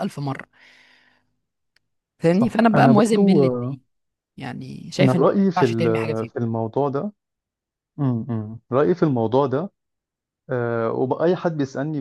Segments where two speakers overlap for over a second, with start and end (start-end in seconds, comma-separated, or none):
2.3-3.8, 5.0-6.3